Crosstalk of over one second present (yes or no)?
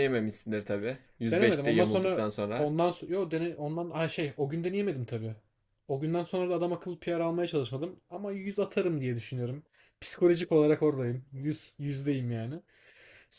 yes